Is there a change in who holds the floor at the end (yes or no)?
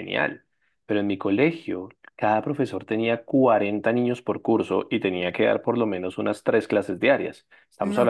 no